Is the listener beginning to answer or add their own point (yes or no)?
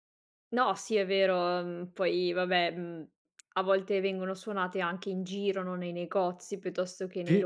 no